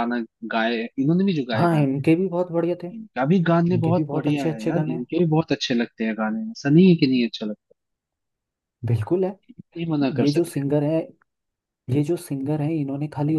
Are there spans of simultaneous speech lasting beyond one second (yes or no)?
yes